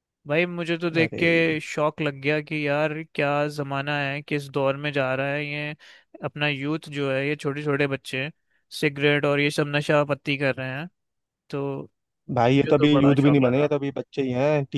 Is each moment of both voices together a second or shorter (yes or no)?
no